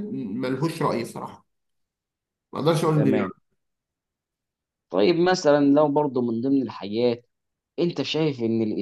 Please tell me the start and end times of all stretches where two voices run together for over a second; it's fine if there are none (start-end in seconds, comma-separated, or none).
none